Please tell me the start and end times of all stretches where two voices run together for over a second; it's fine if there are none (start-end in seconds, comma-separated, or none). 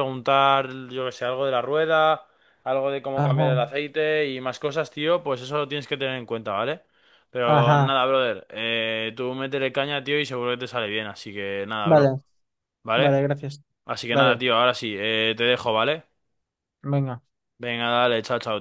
none